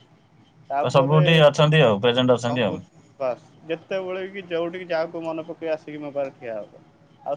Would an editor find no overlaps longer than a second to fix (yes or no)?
no